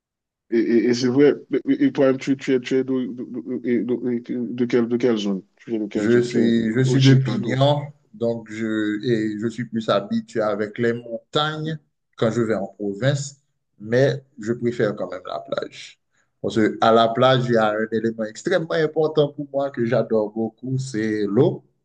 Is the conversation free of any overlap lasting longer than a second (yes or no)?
no